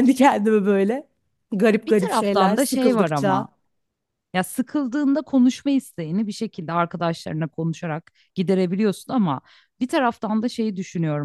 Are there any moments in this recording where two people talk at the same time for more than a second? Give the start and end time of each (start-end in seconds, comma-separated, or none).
1.9-3.5